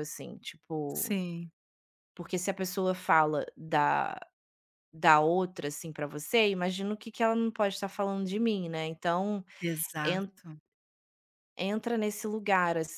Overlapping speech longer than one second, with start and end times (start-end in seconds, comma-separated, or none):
none